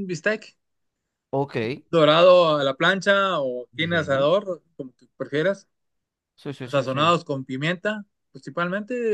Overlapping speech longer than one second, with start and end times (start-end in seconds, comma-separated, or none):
none